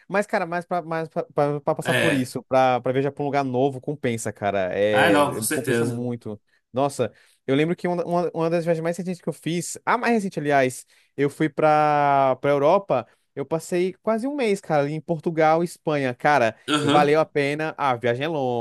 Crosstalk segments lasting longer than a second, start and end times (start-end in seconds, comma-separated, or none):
4.9-6.1